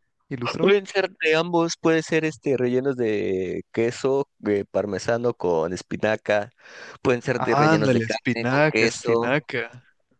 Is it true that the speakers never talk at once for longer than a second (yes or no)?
no